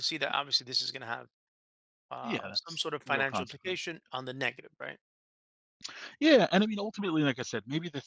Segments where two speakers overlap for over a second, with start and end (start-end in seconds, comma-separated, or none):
2.2-3.9